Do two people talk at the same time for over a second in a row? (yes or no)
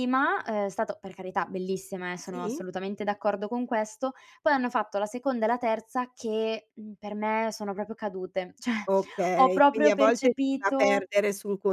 yes